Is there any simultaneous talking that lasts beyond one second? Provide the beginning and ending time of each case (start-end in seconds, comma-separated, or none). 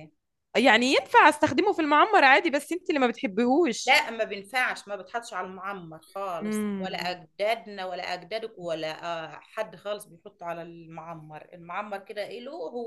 none